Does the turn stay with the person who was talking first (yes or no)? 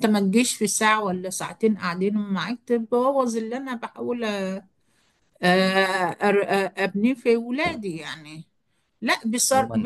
no